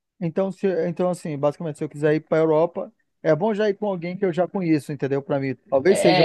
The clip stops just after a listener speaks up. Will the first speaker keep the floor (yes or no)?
no